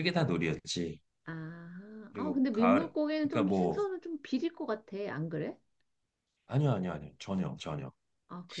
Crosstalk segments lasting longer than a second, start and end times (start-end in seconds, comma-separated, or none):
2.1-3.9